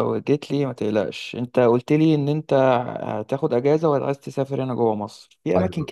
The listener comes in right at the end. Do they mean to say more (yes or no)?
no